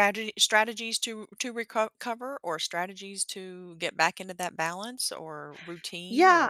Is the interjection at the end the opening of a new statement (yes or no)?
yes